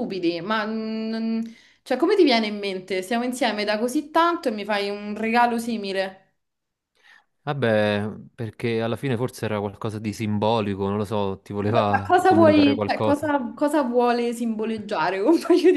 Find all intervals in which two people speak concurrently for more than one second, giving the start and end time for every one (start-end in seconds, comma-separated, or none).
11.7-13.3